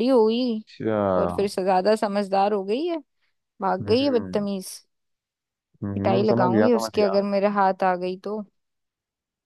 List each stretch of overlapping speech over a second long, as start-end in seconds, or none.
5.9-7.2